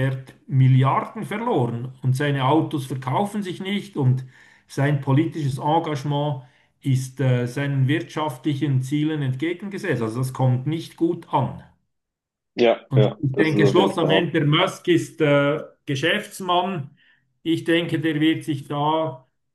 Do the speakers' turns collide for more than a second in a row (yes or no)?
yes